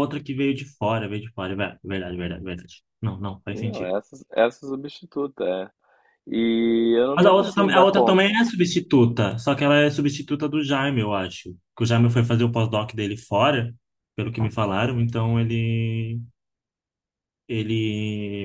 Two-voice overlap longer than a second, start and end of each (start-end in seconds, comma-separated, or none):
7.2-8.4